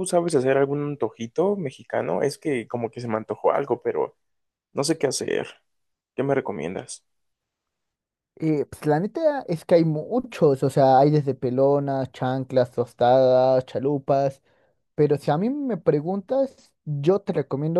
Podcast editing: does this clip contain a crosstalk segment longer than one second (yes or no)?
no